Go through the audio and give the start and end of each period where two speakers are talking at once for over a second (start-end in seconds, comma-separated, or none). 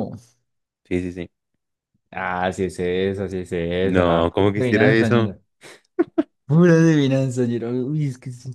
3.8-5.3